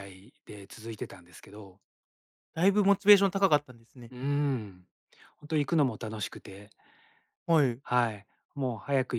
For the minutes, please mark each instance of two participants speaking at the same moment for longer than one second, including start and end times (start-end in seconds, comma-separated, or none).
none